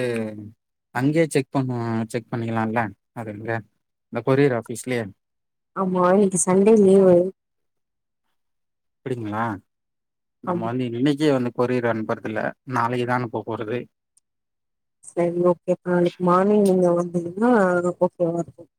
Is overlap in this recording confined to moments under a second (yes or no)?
yes